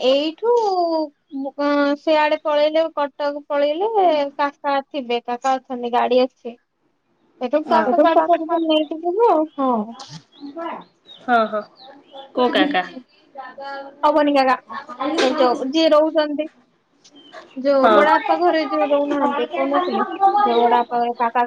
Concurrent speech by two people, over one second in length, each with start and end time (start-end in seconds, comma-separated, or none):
17.8-19.4